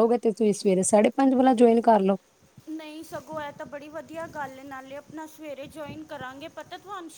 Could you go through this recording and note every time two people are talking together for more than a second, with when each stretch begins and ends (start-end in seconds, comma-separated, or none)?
none